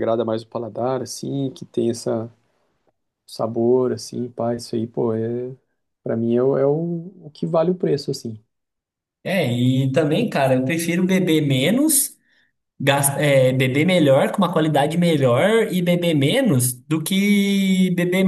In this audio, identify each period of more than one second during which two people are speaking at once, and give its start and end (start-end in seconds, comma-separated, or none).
none